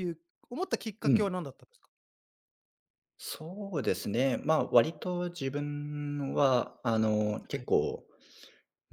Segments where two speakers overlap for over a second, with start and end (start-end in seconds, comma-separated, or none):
none